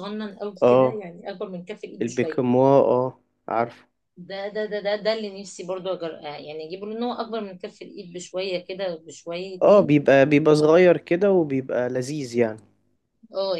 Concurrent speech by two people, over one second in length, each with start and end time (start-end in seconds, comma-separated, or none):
none